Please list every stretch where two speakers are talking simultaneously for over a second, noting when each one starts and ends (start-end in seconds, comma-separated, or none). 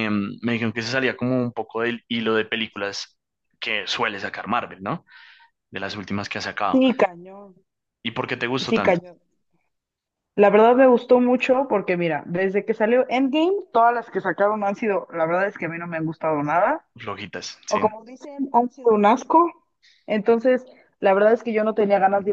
none